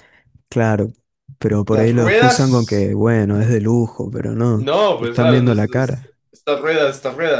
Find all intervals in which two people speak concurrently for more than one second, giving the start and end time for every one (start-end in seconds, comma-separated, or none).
1.7-2.9, 4.5-6.2